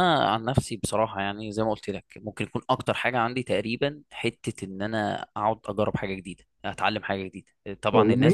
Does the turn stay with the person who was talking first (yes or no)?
yes